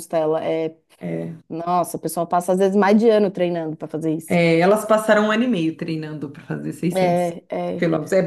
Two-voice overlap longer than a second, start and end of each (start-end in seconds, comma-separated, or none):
none